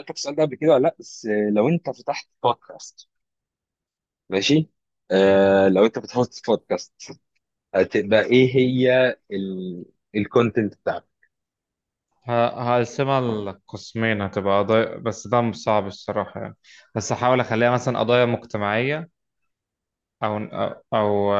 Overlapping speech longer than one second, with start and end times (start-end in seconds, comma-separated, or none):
none